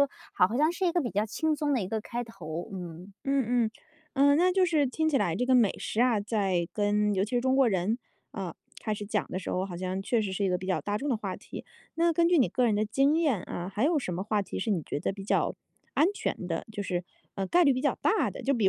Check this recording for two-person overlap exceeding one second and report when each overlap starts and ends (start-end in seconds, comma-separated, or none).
none